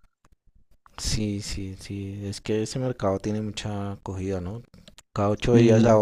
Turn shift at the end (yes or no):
no